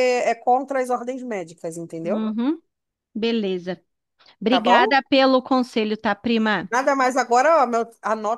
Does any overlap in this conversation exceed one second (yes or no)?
no